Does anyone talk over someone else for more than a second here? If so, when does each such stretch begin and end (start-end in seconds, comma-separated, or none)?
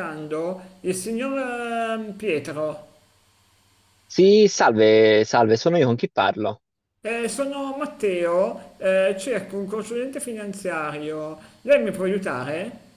none